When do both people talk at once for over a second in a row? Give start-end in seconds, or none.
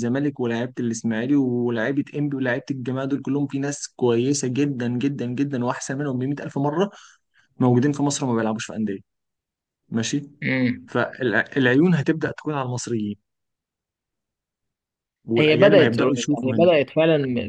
15.4-16.7